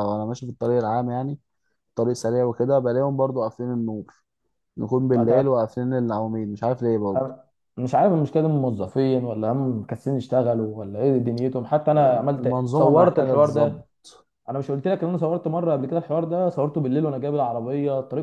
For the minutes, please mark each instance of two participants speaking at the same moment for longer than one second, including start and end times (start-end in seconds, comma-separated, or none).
12.4-13.9